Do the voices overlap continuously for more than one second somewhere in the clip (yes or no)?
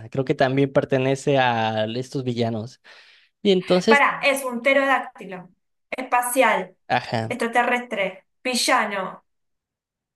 no